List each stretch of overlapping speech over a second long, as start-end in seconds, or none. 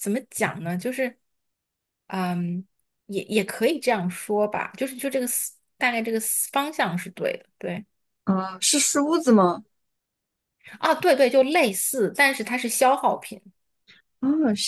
none